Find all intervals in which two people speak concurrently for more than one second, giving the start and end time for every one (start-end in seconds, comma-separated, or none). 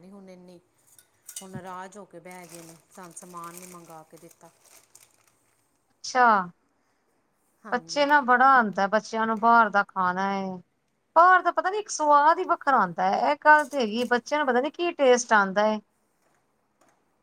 none